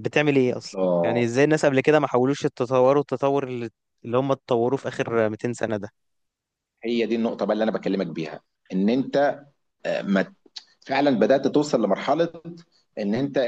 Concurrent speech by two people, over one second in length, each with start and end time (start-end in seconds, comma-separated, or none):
none